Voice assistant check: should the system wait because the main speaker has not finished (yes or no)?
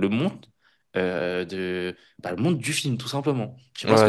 no